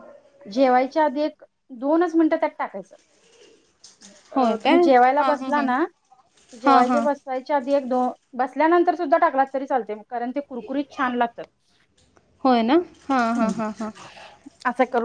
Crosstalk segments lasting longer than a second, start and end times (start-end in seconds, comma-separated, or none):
4.3-5.7